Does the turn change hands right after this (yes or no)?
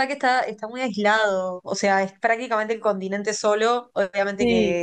no